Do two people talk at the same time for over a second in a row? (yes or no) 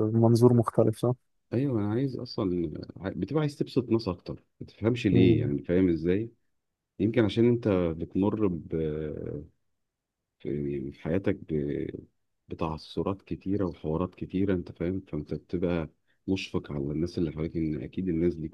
no